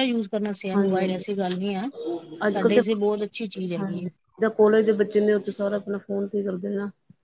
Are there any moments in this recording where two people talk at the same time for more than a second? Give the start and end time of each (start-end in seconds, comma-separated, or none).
none